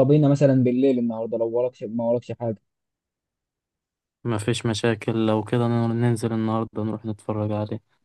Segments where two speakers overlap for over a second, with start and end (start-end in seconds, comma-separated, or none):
none